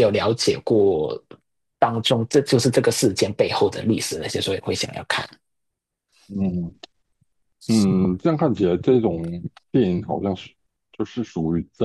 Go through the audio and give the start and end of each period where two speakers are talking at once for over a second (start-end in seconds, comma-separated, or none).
none